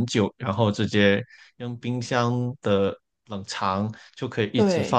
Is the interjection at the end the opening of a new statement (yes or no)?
no